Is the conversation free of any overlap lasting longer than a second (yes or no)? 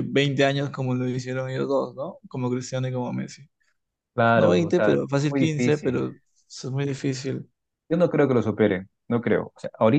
no